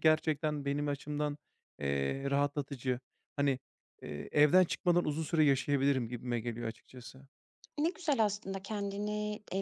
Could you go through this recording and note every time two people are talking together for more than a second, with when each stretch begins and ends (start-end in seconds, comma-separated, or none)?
none